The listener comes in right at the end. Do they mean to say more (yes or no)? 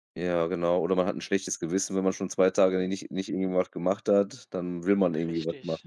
yes